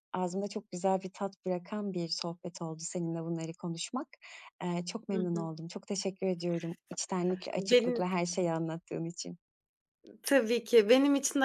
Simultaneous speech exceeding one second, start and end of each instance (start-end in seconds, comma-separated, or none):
none